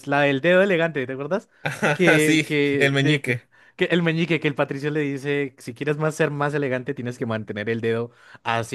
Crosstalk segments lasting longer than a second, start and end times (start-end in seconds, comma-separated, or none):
1.9-3.4